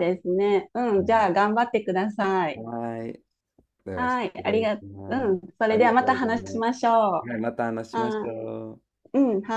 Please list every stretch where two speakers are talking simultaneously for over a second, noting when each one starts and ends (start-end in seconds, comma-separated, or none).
3.9-6.7